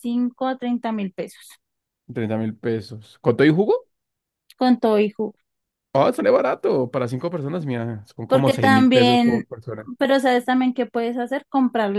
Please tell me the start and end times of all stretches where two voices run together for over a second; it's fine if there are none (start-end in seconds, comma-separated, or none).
8.3-9.5